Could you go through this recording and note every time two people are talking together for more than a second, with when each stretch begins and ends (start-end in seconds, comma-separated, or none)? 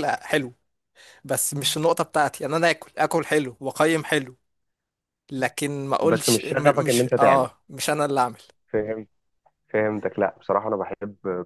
6.0-7.5